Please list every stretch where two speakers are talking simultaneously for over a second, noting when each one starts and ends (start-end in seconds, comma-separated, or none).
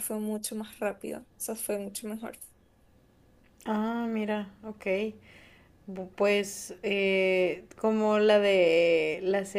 none